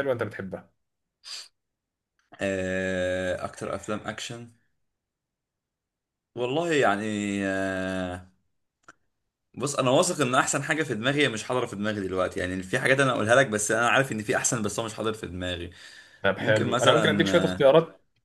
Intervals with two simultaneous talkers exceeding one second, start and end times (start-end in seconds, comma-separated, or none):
16.4-17.7